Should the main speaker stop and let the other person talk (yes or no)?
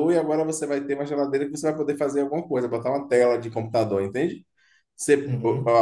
no